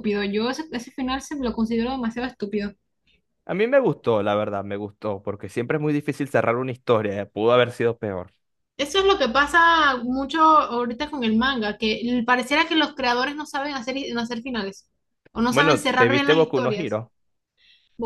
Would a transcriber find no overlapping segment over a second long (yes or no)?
no